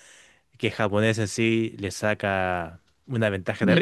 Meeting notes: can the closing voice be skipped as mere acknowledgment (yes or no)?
yes